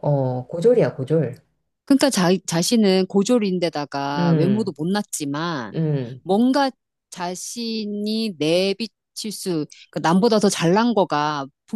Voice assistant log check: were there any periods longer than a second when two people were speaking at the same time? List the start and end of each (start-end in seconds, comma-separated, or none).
none